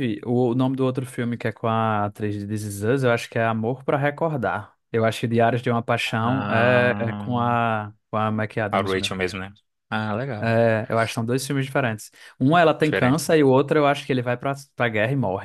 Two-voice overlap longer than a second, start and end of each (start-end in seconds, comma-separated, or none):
6.2-7.4